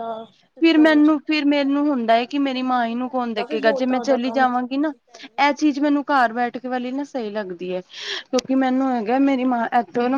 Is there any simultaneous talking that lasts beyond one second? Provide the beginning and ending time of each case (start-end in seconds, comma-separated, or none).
2.6-4.9